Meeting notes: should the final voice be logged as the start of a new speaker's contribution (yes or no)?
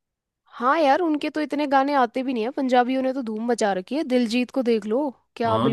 yes